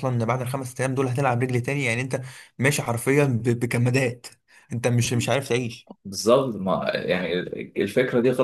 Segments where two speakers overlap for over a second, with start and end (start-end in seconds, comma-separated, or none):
none